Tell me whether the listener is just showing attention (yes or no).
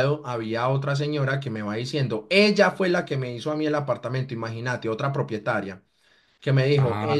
yes